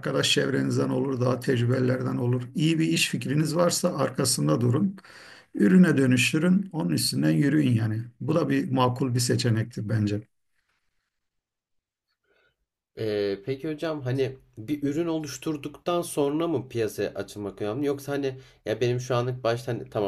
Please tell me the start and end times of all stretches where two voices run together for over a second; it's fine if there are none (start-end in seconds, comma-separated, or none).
none